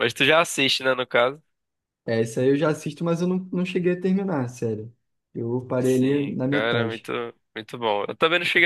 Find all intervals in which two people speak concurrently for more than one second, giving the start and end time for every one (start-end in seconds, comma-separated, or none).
5.8-7.1